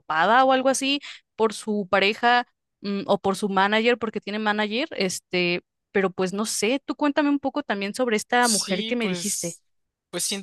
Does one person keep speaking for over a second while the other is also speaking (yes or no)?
yes